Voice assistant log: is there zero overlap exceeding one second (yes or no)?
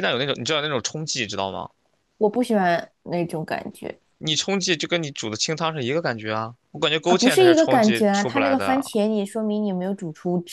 no